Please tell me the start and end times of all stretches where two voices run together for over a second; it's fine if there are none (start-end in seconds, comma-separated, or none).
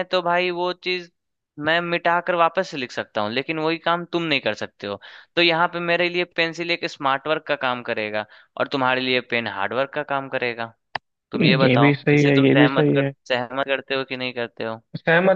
11.4-13.1